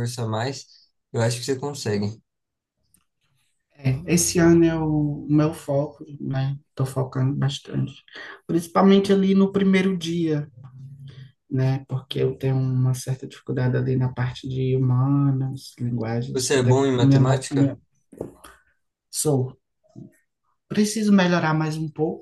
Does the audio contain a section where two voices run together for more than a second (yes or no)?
yes